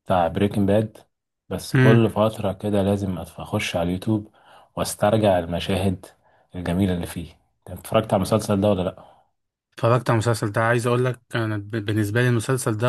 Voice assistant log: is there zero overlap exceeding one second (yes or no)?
yes